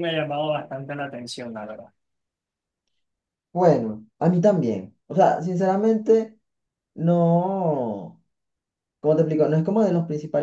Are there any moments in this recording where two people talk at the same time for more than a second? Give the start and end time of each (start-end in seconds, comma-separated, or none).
none